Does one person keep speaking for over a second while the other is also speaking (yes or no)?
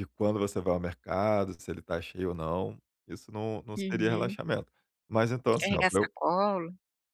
no